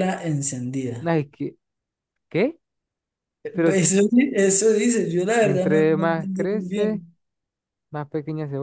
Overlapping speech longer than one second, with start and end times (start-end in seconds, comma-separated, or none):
5.4-7.0